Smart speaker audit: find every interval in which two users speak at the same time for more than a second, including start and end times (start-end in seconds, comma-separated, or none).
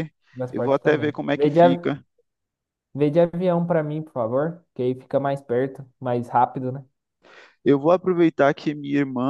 0.5-1.9